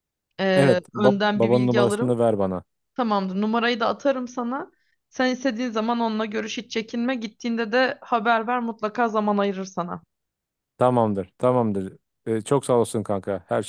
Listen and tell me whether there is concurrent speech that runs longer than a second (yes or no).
yes